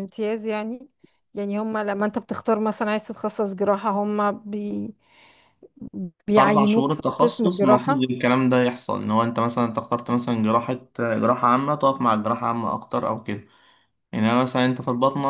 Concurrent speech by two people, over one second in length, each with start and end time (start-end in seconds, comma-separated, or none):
6.3-8.1